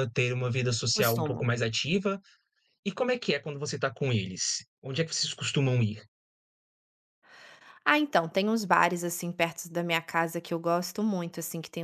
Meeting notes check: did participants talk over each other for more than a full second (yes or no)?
no